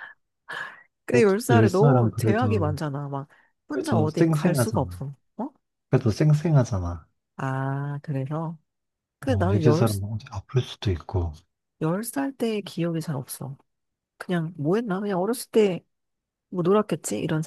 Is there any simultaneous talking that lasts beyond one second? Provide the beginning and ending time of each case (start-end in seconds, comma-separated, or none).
1.1-2.8, 3.7-5.0